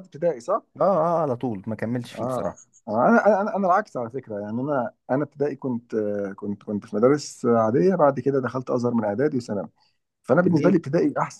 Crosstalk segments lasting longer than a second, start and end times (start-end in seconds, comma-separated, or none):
none